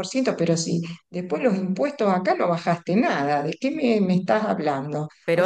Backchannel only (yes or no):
yes